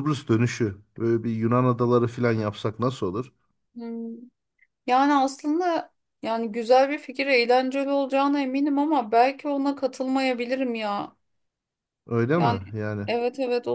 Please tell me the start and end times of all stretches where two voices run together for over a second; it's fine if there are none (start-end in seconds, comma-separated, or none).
none